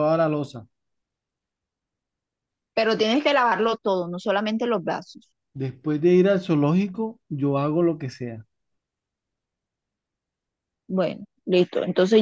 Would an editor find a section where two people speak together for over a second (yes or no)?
no